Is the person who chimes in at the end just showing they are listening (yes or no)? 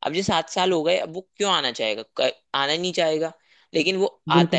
yes